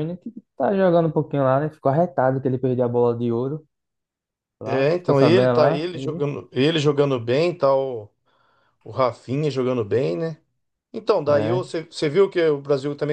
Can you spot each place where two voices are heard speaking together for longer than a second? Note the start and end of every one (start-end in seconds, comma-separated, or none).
4.6-6.3